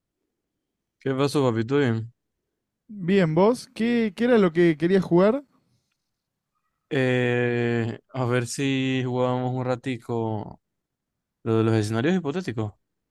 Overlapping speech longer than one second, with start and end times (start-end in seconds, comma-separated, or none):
none